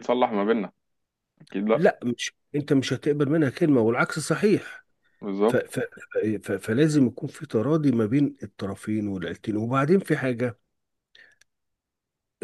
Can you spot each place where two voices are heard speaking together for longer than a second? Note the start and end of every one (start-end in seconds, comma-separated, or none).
none